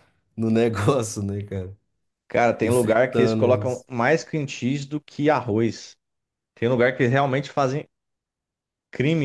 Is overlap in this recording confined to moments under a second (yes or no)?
no